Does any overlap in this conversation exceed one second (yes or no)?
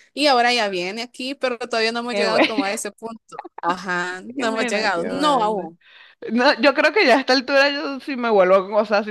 yes